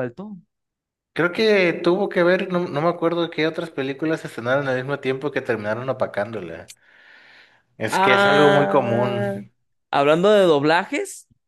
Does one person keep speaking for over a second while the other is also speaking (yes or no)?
yes